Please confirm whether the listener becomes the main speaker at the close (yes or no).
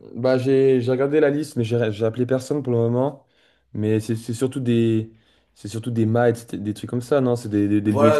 yes